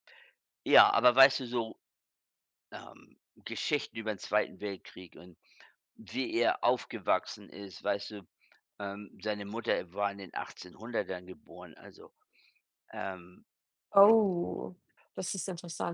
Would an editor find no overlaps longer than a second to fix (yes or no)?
yes